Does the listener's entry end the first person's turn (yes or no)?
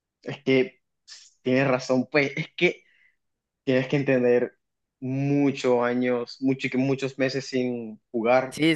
yes